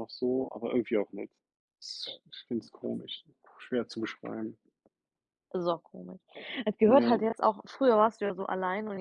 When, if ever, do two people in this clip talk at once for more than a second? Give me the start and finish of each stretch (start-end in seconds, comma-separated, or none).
none